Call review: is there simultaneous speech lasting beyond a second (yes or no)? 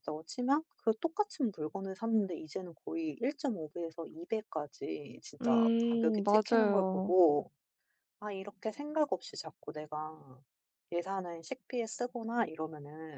yes